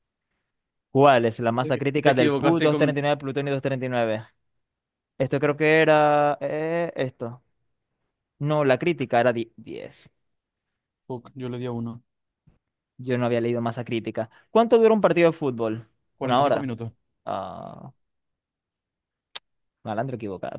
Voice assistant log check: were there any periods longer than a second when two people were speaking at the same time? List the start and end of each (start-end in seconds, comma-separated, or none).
1.6-3.0